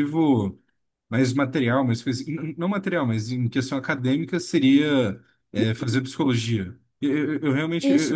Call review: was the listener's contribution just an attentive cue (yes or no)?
yes